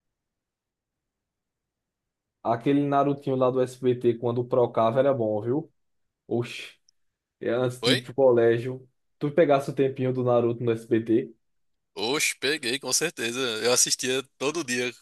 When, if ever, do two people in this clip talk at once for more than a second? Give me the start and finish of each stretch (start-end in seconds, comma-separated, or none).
none